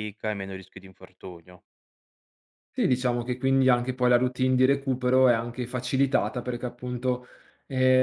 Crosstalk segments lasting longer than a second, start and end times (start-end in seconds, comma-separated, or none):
none